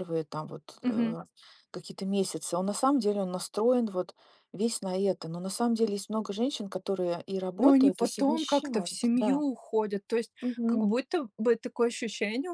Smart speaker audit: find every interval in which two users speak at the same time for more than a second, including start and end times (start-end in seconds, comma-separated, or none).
7.6-9.4